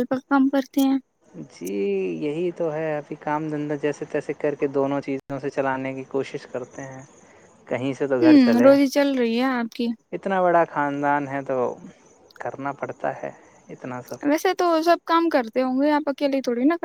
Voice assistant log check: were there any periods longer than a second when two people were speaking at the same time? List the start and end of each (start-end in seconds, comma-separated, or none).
none